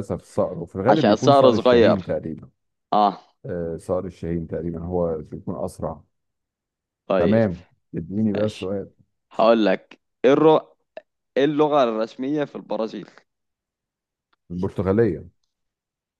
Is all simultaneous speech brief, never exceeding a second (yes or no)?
no